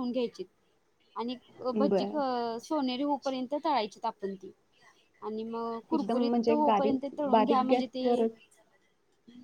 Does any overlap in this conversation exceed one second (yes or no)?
yes